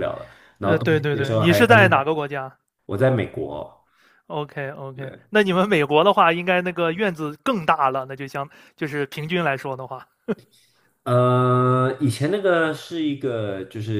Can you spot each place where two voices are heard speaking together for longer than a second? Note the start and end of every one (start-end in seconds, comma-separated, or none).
0.6-2.0